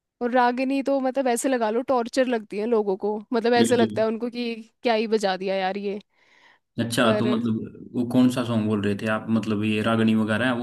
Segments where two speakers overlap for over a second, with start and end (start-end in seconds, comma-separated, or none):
none